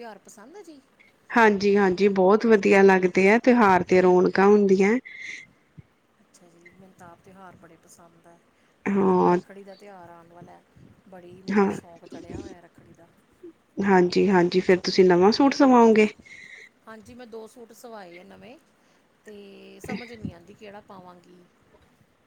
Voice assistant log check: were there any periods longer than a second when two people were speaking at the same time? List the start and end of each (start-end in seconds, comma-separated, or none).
none